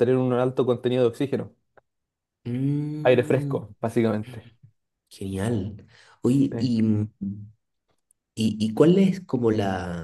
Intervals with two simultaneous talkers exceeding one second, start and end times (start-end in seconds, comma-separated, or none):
none